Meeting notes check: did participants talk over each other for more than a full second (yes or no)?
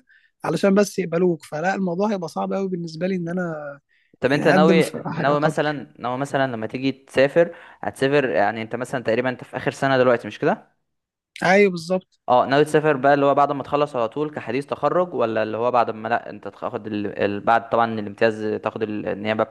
yes